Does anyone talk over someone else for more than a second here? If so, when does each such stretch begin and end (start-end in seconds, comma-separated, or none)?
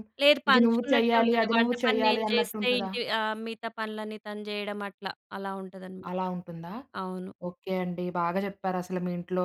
0.5-2.9